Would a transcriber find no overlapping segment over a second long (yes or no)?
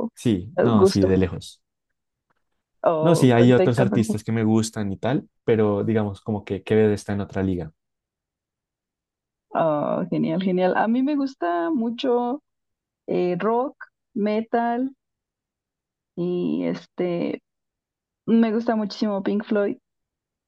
no